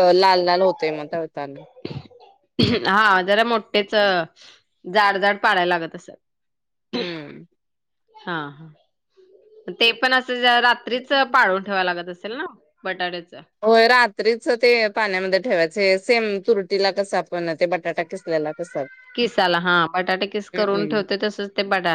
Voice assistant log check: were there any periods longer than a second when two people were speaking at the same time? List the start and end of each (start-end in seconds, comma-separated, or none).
none